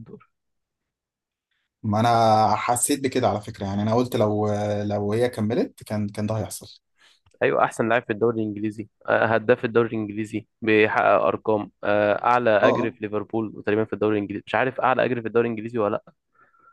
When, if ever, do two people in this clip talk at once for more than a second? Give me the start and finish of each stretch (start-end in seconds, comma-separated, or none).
none